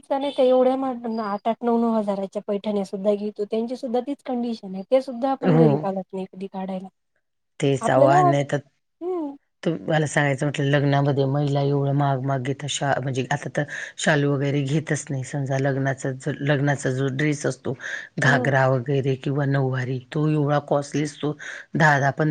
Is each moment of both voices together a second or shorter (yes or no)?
yes